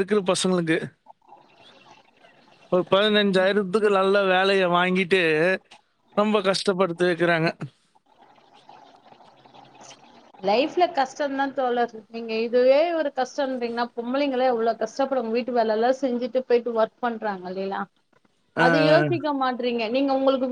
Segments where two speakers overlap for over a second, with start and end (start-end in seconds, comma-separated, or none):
none